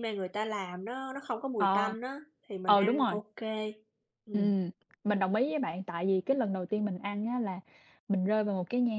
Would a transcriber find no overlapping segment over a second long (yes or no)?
yes